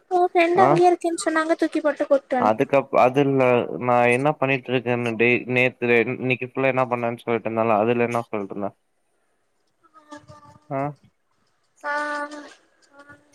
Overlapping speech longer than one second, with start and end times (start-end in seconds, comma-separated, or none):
none